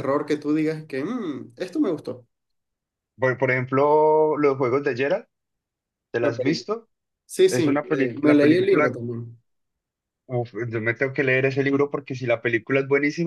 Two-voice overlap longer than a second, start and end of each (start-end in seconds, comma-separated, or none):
7.5-9.0